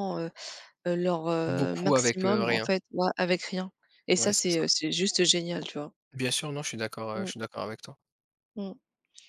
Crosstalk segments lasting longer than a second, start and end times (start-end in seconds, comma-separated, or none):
1.4-2.7